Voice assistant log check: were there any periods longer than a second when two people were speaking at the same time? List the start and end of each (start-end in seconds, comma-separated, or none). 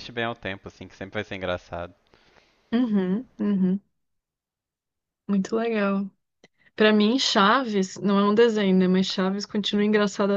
none